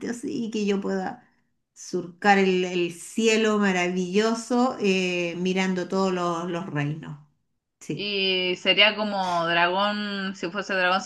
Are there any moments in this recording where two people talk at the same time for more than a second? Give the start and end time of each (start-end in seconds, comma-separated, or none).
none